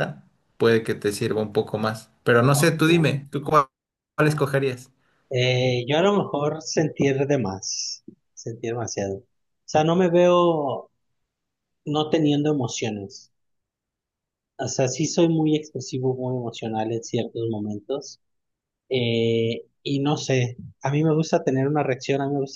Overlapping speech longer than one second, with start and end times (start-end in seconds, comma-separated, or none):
none